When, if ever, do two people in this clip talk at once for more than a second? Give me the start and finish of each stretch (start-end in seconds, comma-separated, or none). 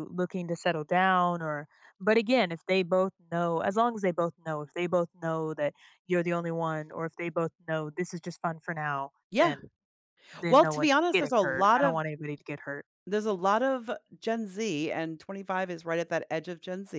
10.5-12.0